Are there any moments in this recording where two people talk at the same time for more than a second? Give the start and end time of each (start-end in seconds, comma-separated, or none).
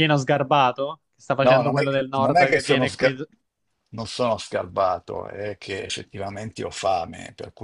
1.4-3.1